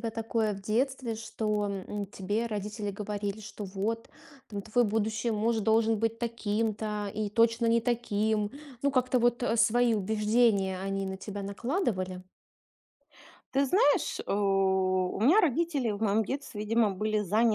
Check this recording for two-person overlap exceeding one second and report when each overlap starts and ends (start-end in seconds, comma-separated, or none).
none